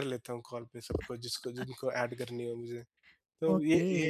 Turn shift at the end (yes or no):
yes